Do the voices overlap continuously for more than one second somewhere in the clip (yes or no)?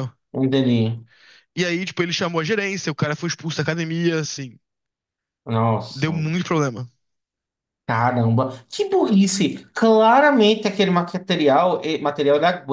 no